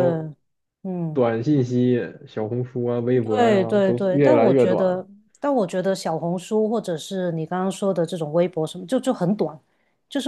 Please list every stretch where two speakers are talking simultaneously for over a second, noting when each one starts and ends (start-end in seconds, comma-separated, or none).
3.4-5.0